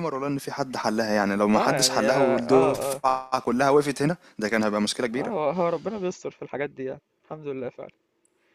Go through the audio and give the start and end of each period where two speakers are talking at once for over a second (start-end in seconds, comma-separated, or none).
1.6-3.0